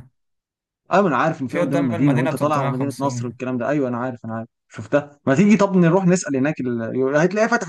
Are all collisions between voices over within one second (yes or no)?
no